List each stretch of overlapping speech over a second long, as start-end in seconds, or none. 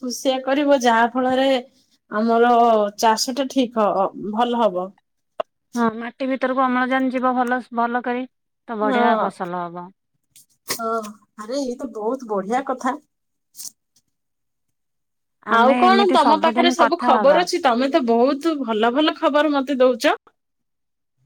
15.6-17.4